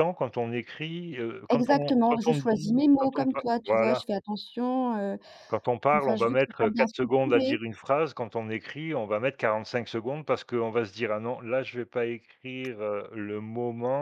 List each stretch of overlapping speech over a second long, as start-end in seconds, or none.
1.5-4.0, 6.0-7.6